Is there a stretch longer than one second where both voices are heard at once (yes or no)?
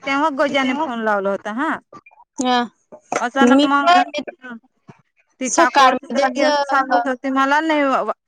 yes